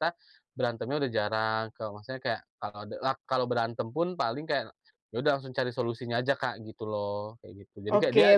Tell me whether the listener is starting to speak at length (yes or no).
yes